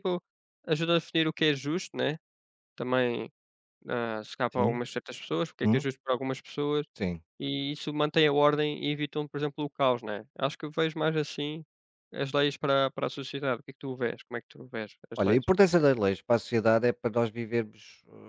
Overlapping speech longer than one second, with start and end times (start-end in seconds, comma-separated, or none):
none